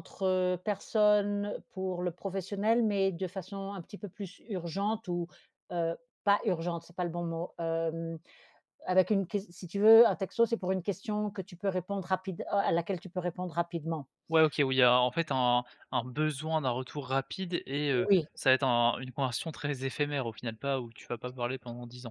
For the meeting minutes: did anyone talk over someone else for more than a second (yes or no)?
no